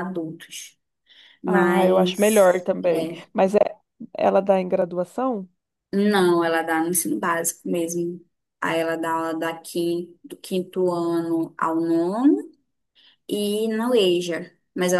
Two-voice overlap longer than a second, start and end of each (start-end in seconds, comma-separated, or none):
1.5-3.2